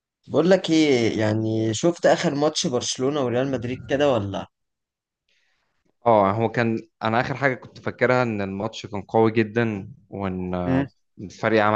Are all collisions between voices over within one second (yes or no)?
yes